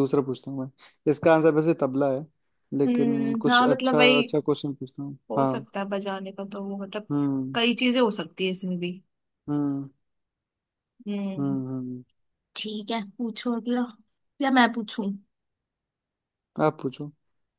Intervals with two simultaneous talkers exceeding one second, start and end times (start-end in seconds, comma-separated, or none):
2.9-4.2